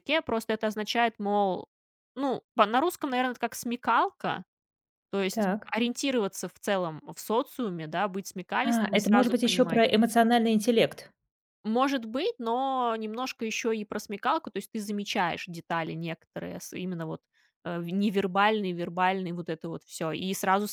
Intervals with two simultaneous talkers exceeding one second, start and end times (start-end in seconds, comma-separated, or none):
8.6-9.8